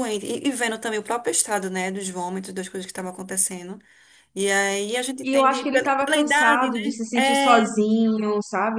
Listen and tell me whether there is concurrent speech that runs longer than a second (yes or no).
yes